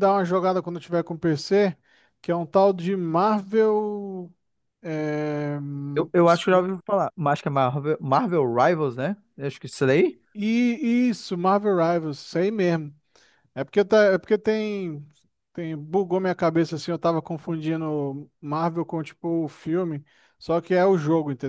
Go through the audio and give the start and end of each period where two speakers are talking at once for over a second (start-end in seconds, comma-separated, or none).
none